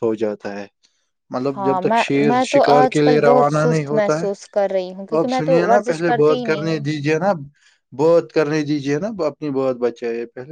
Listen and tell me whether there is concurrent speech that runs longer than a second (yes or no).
yes